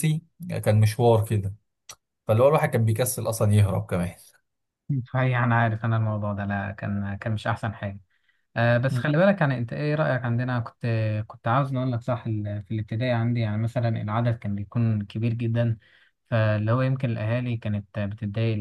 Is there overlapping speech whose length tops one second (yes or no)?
no